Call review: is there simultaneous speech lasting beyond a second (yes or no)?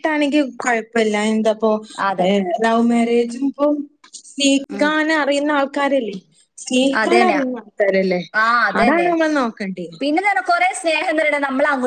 no